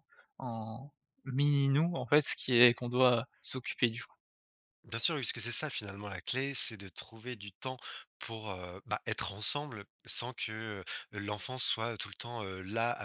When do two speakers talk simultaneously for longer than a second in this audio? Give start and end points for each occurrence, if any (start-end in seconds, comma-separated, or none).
none